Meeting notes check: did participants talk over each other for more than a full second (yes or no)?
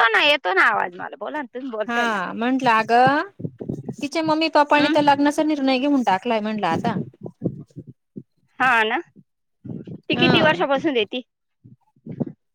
no